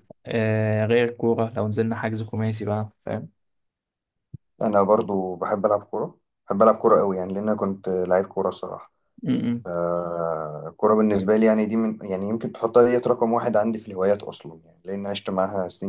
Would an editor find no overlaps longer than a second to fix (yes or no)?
yes